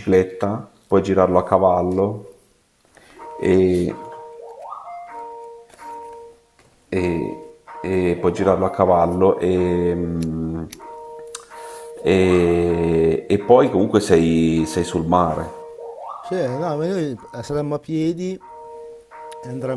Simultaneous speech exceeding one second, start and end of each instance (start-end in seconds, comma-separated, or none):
none